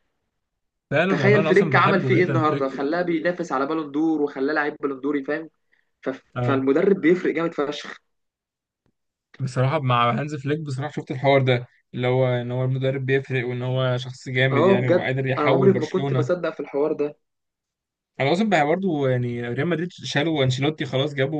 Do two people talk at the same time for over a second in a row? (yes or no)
yes